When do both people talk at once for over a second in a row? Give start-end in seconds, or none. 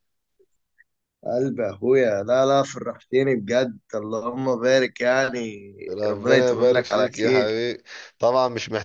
6.1-7.5